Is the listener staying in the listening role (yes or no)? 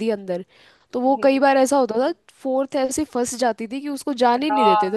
no